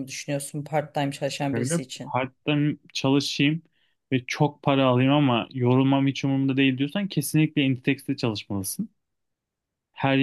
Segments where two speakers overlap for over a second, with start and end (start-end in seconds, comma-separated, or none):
none